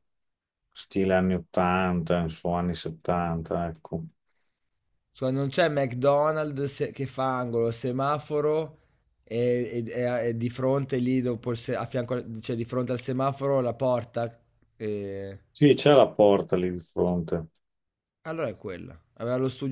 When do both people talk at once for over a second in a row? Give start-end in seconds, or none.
none